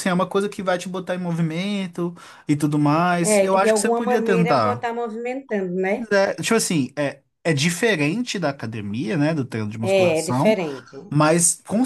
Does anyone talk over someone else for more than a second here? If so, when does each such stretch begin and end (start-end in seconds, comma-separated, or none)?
3.2-4.9